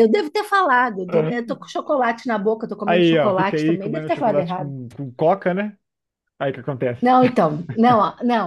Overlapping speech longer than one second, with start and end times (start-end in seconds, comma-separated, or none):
2.8-4.7